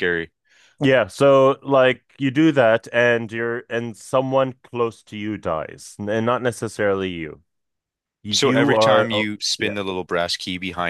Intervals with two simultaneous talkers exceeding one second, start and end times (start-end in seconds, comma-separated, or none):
8.3-9.7